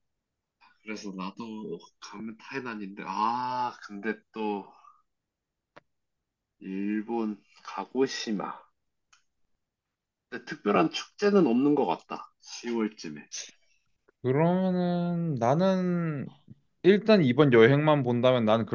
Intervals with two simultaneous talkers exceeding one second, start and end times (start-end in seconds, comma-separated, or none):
none